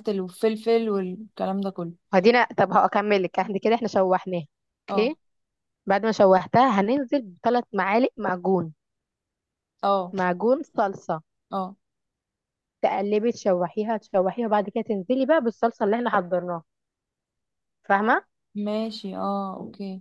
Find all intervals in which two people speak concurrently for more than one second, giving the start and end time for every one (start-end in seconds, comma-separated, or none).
none